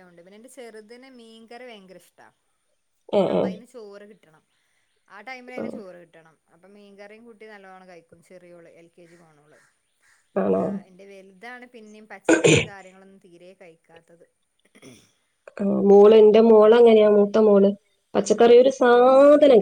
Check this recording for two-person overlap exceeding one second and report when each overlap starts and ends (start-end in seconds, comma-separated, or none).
none